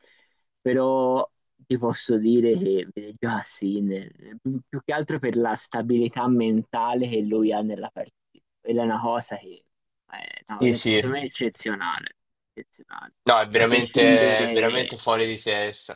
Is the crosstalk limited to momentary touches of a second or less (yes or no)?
no